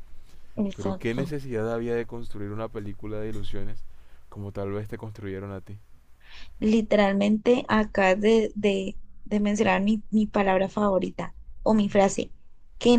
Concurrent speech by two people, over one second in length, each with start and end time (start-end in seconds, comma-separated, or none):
none